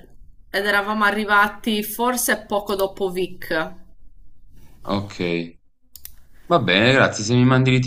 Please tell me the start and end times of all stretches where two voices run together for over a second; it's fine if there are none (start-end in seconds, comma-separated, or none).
none